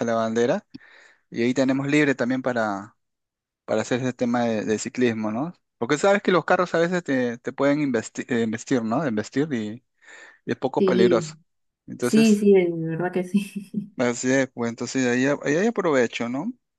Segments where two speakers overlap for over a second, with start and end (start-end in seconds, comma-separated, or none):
none